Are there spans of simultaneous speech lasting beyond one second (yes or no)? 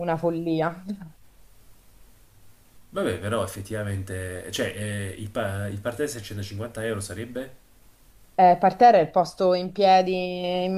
no